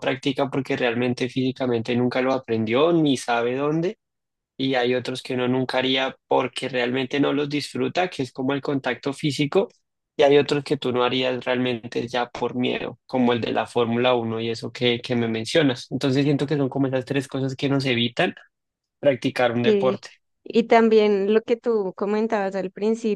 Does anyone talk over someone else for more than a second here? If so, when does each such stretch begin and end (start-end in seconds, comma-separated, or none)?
none